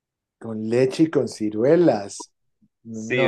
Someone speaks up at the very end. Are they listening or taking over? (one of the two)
taking over